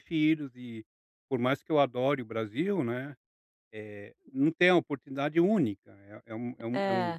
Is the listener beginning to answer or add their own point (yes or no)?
no